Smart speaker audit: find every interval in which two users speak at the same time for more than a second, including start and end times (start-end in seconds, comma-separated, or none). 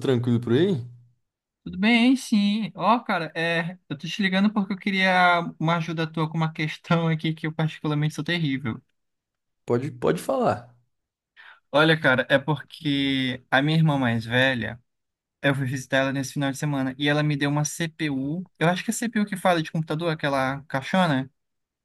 none